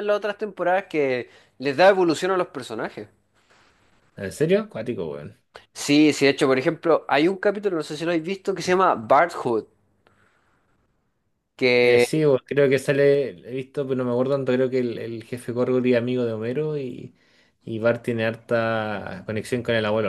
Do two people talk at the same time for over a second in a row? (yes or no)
no